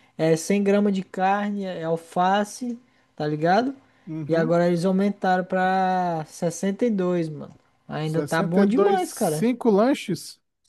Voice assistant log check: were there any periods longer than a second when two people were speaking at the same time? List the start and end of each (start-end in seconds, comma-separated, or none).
8.0-9.5